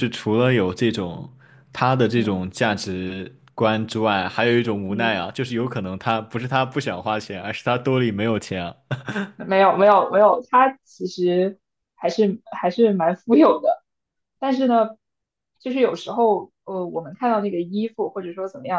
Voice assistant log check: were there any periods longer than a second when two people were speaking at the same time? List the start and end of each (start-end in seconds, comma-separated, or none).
none